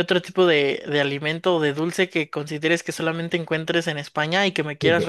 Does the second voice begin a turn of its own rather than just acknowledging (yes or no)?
yes